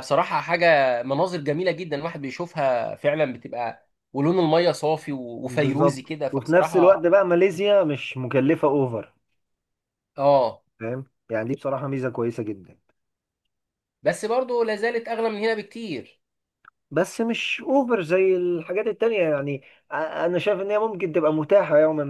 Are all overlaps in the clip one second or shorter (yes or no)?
no